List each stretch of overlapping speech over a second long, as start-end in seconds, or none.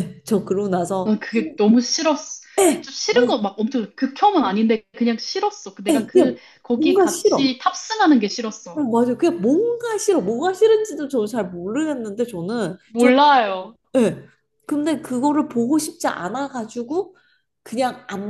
5.9-7.5